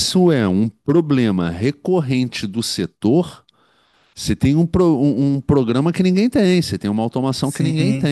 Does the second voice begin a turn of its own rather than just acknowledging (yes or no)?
yes